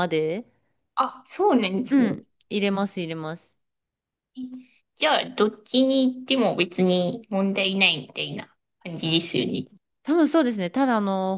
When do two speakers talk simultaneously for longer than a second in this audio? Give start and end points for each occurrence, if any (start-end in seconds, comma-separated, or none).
none